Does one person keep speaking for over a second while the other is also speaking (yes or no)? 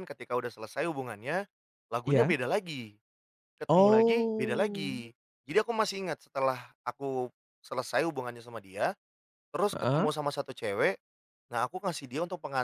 yes